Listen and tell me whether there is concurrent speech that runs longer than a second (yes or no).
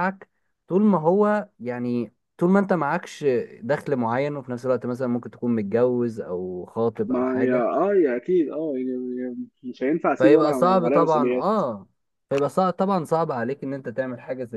yes